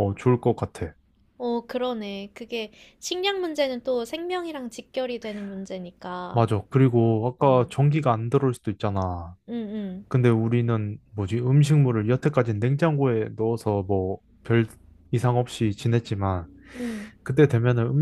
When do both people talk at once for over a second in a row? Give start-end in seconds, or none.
none